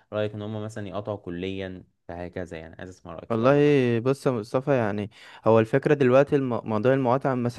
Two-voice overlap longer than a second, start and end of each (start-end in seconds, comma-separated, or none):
none